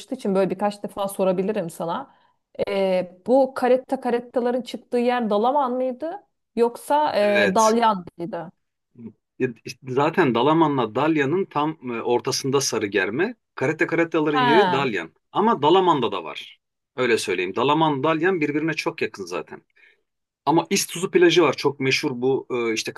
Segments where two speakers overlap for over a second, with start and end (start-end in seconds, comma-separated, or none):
none